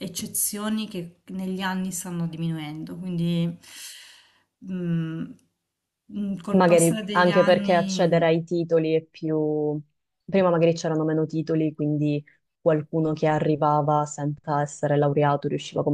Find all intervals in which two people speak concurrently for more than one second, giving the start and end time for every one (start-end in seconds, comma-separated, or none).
6.5-8.2